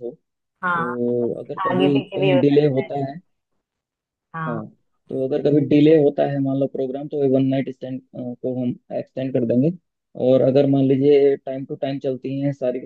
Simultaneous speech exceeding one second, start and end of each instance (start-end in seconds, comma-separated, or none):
0.6-2.9